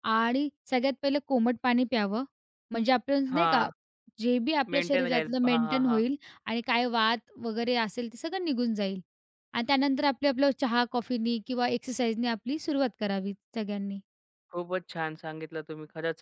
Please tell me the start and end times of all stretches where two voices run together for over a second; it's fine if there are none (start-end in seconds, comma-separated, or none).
4.7-6.0